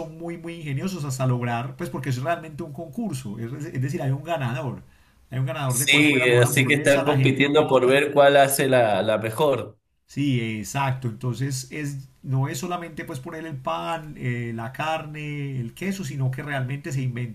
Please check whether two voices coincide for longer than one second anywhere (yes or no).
yes